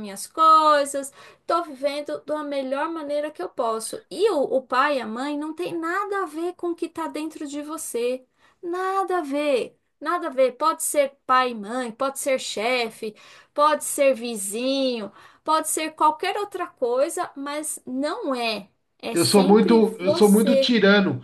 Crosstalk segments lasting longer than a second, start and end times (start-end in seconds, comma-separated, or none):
19.1-20.7